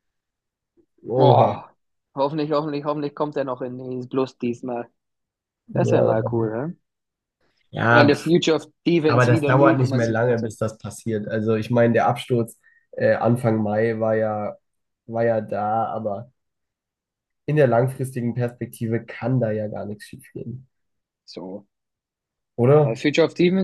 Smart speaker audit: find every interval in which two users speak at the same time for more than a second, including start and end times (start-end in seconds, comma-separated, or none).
9.1-10.6